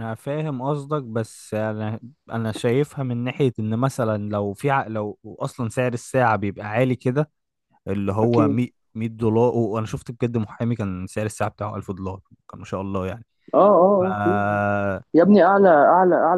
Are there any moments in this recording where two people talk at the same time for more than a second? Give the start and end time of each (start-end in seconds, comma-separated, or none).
none